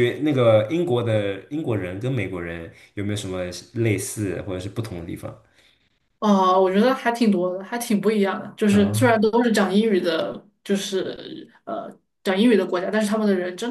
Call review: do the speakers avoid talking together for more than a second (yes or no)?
yes